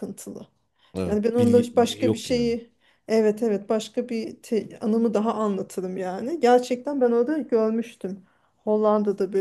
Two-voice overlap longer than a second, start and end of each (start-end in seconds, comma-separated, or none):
1.0-2.5